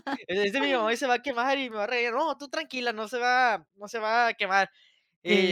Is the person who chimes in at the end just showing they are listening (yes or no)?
yes